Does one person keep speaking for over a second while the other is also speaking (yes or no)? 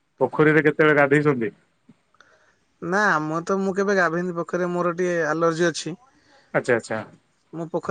no